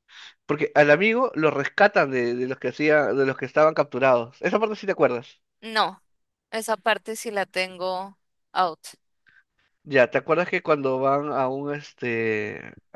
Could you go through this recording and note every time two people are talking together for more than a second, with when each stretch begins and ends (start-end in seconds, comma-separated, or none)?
none